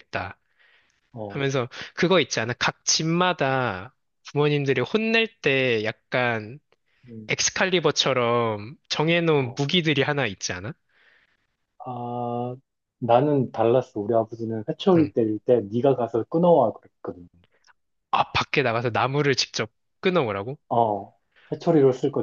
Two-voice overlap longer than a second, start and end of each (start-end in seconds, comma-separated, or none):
none